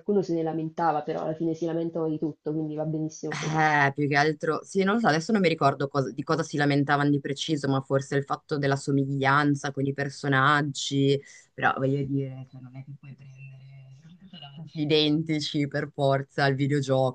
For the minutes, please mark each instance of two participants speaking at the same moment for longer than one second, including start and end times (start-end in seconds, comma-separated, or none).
none